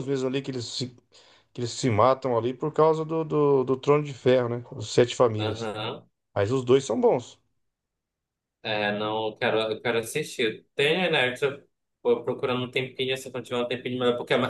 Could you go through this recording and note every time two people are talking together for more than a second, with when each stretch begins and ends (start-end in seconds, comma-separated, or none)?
none